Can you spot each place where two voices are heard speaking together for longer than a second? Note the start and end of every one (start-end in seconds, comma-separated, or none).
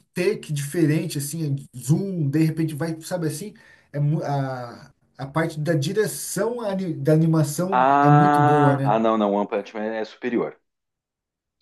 7.7-9.0